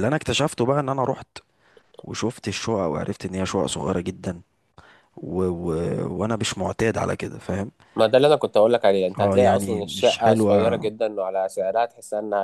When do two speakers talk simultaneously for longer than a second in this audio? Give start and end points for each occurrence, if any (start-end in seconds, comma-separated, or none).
9.2-10.9